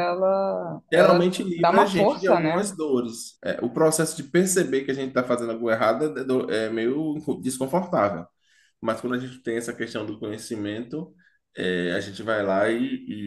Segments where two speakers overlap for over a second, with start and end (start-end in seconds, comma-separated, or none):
0.9-2.7